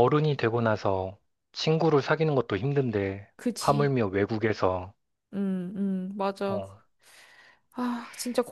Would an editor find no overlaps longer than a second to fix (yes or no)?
yes